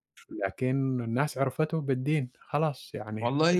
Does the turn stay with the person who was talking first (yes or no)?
no